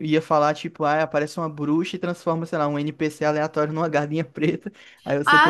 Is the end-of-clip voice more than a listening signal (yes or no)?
yes